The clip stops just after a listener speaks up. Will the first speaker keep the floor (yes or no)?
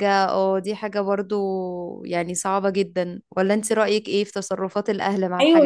no